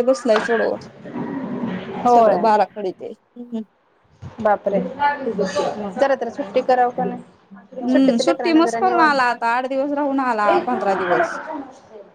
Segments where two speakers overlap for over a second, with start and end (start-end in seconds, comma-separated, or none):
7.9-9.2